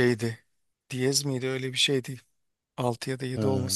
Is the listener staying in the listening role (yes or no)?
yes